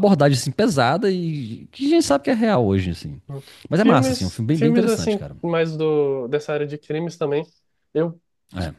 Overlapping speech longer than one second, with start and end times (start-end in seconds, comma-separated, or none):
3.8-5.3